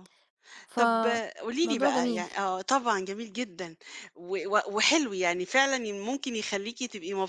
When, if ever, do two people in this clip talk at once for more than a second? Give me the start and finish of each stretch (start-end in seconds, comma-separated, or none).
0.8-2.3